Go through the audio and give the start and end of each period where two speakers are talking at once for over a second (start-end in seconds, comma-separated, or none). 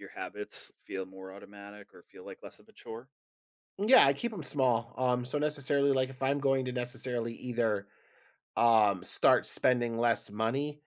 none